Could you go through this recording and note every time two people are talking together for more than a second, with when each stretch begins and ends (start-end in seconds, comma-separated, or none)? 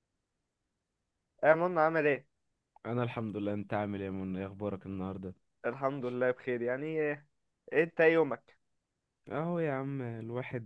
none